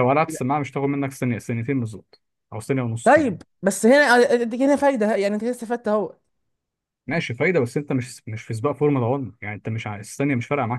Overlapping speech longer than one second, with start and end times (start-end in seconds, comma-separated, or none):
none